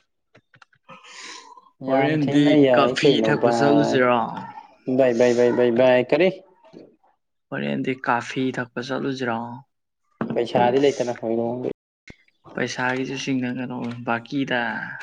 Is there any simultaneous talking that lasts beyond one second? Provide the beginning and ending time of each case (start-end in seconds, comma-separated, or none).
1.9-4.0